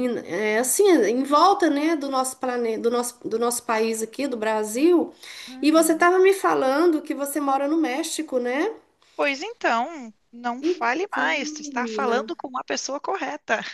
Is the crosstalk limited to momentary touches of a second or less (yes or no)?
no